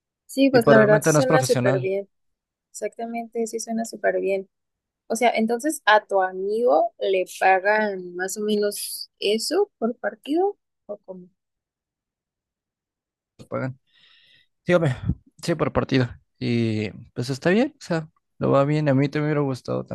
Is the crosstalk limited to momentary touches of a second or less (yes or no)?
no